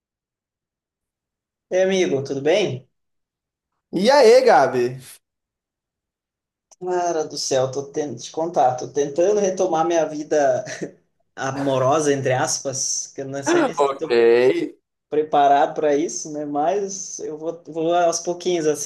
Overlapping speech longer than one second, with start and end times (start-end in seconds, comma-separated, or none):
none